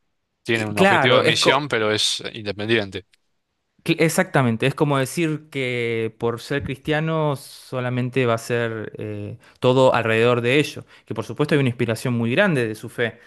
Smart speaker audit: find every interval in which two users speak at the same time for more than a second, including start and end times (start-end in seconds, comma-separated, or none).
0.5-1.7